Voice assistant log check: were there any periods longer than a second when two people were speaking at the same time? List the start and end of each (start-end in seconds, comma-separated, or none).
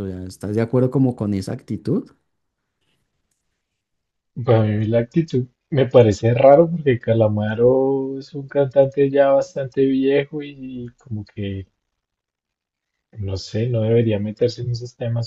none